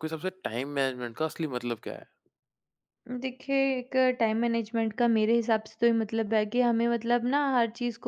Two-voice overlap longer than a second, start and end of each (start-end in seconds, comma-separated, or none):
none